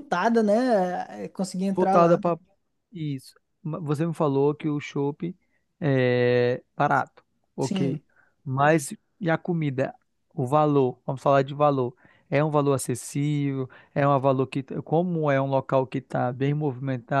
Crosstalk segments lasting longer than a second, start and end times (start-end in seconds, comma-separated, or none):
none